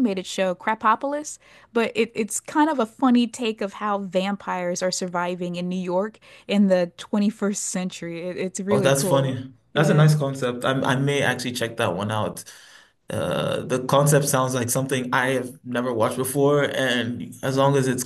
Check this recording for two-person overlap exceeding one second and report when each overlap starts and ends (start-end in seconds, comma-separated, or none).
8.7-10.1